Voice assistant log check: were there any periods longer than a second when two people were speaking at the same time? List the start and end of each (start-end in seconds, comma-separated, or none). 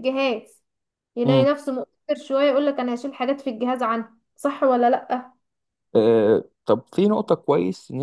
none